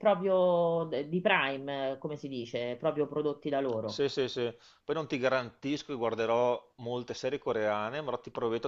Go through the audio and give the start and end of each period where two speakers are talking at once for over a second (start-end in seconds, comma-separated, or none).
none